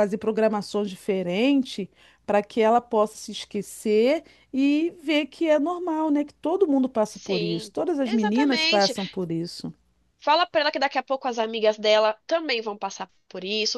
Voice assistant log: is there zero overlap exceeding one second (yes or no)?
no